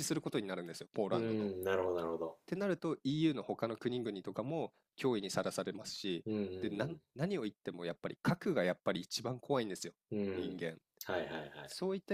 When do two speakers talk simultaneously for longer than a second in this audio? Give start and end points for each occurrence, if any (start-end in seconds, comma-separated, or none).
none